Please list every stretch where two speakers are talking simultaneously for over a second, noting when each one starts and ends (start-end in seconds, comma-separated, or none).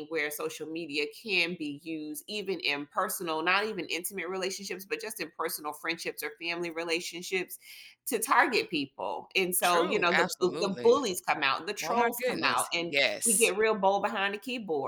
9.6-11.0, 11.8-13.5